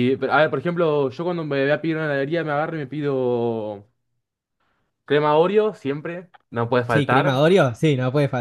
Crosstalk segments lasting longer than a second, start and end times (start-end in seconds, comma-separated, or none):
none